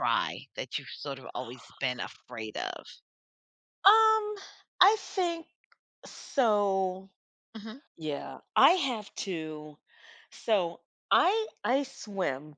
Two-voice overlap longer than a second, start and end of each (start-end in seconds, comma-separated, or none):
none